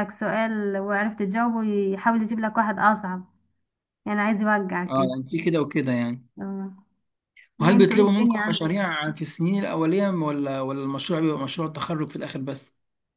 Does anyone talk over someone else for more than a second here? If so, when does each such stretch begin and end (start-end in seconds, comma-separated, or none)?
7.6-8.8